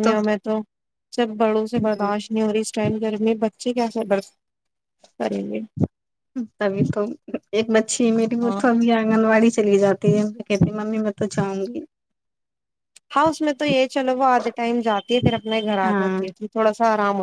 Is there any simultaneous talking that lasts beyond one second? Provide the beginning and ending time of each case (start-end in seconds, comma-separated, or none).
none